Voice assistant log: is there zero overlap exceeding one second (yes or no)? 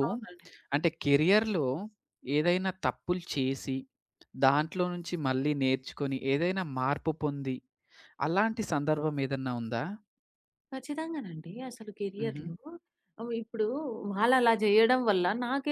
yes